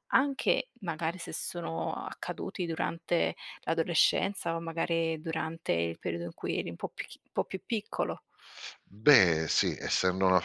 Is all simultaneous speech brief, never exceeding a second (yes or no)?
yes